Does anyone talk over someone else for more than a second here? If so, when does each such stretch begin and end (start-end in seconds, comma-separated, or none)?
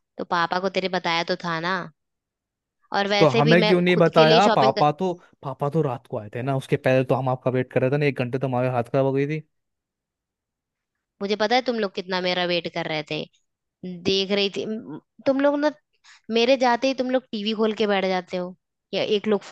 3.2-4.8